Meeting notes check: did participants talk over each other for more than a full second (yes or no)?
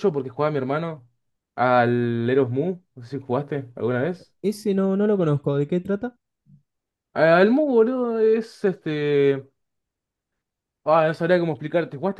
no